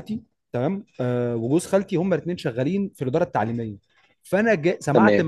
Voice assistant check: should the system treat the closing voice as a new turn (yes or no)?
no